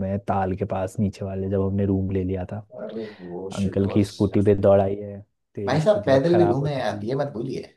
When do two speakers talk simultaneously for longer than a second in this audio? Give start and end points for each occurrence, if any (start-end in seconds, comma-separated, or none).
5.7-7.1